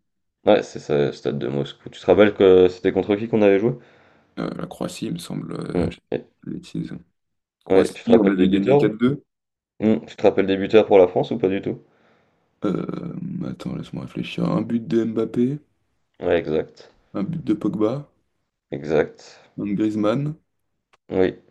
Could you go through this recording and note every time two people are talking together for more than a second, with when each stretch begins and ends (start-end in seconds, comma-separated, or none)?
7.7-8.9